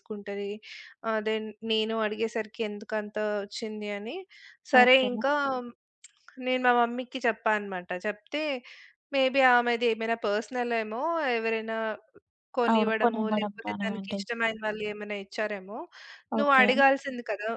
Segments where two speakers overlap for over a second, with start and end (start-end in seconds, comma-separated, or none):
12.7-14.2